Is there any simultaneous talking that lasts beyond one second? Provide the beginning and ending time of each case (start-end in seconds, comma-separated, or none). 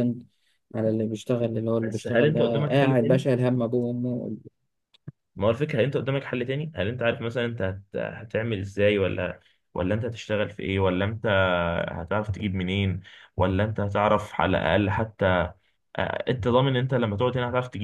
1.8-3.2